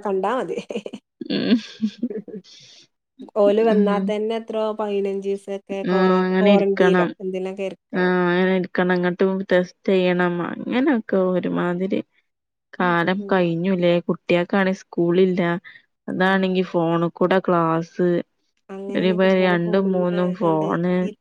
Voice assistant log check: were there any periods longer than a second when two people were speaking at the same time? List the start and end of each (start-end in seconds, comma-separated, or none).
19.0-20.7